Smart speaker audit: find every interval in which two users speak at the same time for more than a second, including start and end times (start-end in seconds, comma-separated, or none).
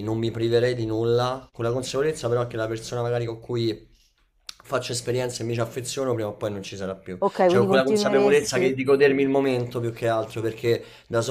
7.2-8.7